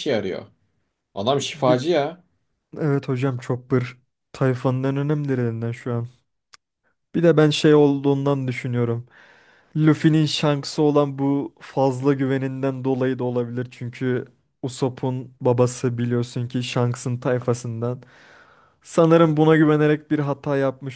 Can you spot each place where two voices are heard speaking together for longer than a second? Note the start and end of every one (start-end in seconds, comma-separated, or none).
none